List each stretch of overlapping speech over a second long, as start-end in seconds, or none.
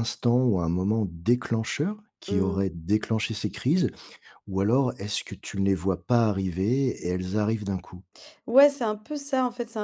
none